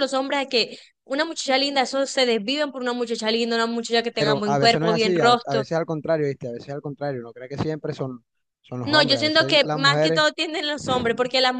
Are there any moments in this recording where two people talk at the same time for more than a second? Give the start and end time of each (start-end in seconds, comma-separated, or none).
4.2-5.7, 8.8-10.3